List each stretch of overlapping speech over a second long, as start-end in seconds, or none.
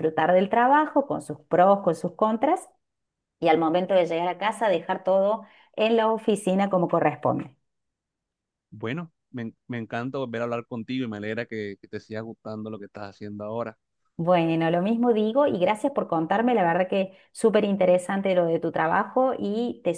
none